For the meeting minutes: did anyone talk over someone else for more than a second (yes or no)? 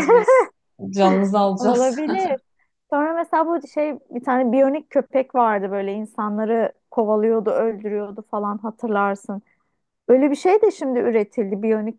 no